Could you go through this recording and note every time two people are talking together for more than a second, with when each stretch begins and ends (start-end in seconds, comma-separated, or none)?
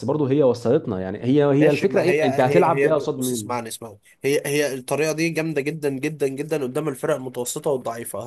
1.6-3.6